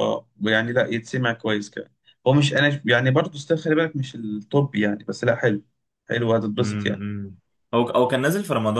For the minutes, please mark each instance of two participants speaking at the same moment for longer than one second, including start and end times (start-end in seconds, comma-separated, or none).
none